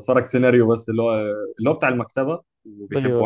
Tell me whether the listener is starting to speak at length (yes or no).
no